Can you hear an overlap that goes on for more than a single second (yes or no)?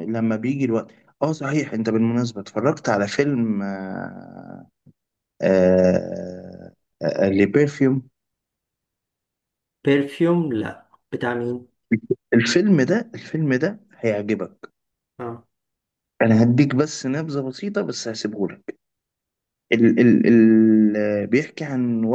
no